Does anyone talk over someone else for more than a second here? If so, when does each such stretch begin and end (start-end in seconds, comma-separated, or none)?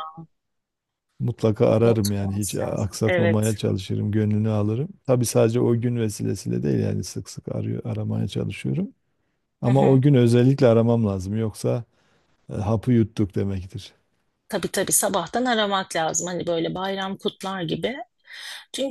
1.8-3.5